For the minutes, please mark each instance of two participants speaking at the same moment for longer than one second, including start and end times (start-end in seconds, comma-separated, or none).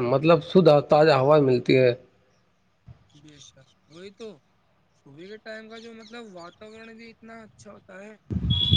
none